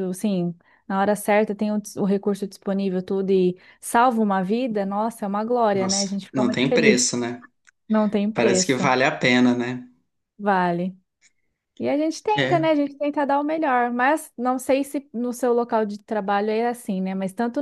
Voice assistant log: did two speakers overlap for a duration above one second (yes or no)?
yes